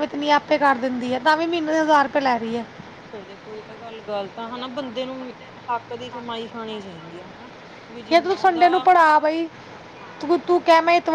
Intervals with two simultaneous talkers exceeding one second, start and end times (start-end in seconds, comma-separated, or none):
8.1-9.5